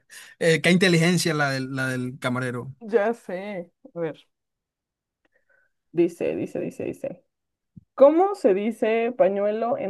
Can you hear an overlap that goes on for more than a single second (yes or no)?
no